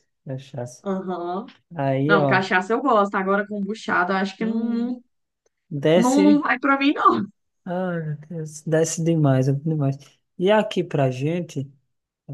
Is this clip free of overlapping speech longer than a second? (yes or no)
yes